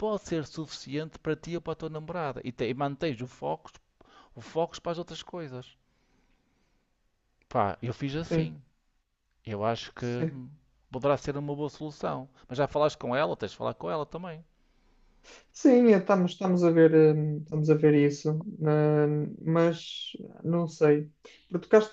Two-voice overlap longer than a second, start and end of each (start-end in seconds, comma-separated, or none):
none